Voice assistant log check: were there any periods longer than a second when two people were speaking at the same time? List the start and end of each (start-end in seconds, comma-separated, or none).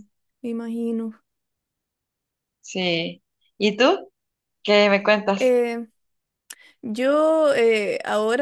none